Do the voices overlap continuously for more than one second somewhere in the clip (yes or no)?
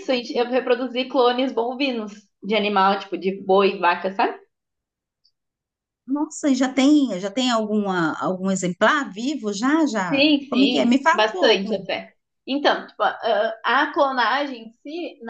yes